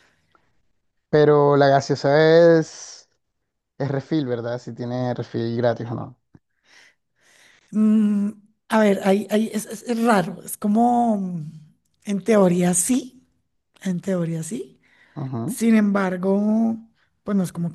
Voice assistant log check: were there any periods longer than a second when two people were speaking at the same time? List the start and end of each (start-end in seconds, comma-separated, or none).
none